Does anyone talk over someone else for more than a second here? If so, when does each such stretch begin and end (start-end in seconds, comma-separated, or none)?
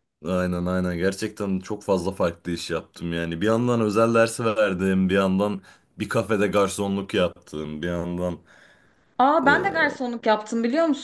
none